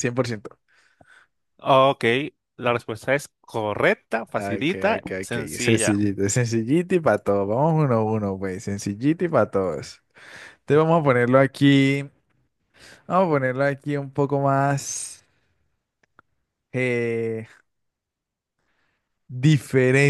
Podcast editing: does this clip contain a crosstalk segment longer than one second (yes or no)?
yes